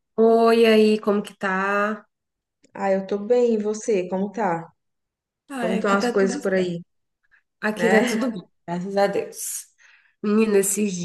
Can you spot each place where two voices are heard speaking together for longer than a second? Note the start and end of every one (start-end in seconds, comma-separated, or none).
5.6-6.8